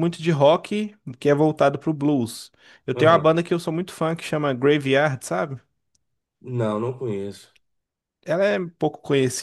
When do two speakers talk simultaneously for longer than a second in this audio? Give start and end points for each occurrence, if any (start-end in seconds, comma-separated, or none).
none